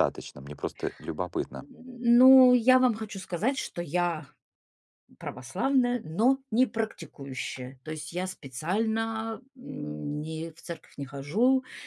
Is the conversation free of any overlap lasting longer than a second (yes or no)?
yes